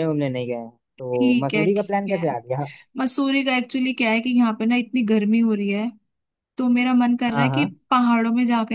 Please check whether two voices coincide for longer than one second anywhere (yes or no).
yes